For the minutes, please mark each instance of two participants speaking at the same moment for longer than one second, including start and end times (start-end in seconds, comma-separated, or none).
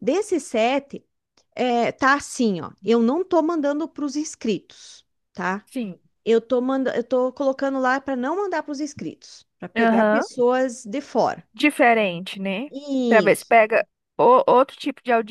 none